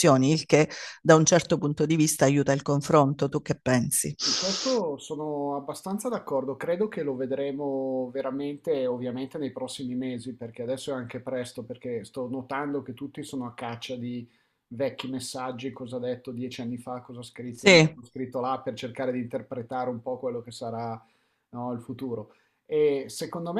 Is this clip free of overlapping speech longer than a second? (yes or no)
yes